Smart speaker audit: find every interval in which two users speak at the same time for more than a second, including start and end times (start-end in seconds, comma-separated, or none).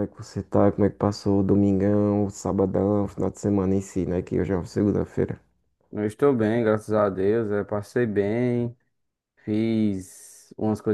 none